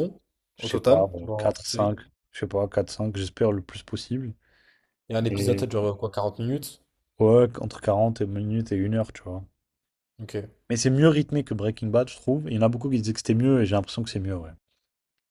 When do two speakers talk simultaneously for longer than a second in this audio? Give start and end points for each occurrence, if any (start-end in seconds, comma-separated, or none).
0.6-2.0